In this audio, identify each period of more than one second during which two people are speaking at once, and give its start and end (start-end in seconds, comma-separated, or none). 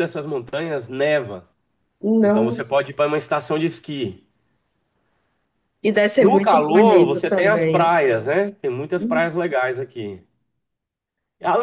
6.2-7.9